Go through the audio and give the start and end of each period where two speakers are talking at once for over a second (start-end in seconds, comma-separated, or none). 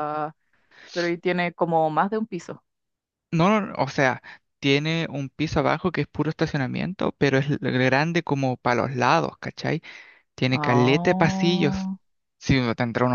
10.5-11.9